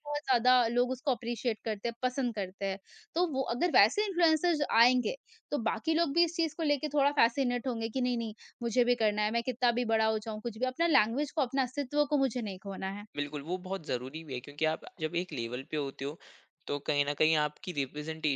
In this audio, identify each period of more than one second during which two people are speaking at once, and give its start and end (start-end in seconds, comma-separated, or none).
none